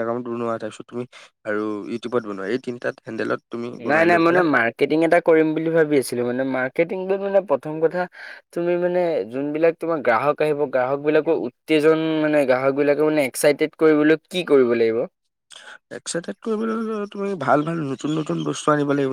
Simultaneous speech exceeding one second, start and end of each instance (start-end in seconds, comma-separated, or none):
none